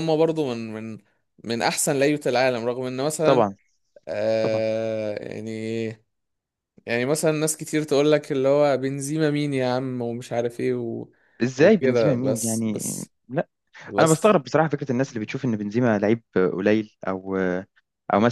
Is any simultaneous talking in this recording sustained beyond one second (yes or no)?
yes